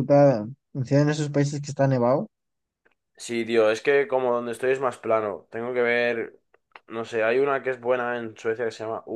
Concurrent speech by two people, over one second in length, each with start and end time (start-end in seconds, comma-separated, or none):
none